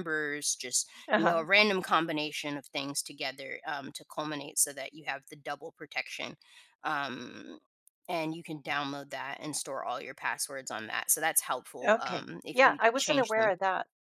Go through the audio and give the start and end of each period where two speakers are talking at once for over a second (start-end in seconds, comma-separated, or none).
11.9-13.5